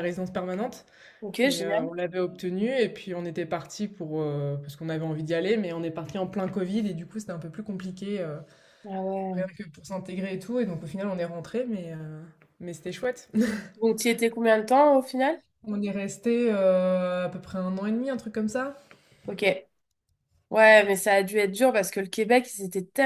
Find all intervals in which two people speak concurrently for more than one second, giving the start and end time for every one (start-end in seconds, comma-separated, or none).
none